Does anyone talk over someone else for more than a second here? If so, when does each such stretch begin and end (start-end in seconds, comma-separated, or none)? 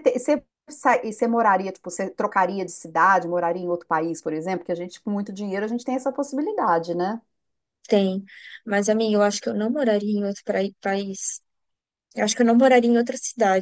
none